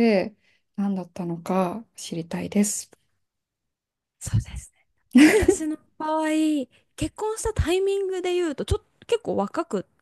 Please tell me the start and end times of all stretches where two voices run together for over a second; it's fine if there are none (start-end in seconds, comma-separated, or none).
none